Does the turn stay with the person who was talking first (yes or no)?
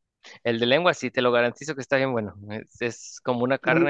yes